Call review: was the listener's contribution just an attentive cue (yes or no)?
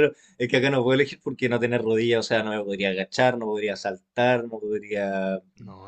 yes